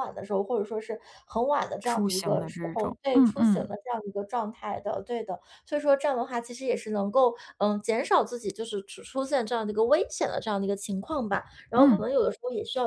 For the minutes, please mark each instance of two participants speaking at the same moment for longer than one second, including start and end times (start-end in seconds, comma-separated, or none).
1.8-3.7